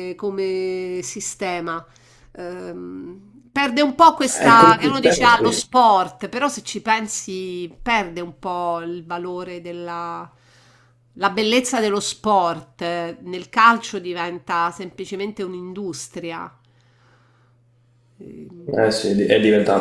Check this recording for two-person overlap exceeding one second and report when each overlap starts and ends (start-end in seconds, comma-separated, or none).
4.4-5.7